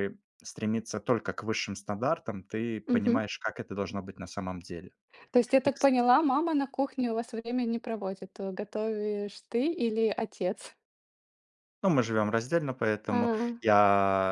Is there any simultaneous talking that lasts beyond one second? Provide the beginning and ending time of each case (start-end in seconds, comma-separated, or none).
none